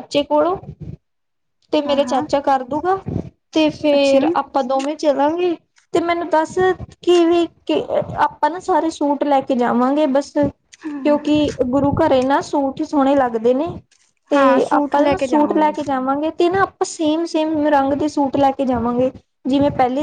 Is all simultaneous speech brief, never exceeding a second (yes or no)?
no